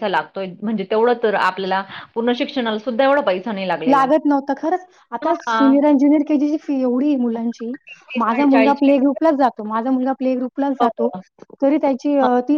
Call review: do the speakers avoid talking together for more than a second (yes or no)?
yes